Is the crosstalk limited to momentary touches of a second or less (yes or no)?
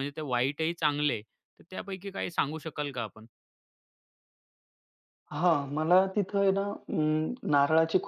yes